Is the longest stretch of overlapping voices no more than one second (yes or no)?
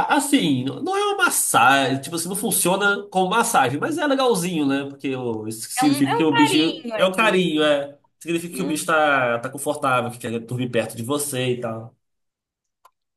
no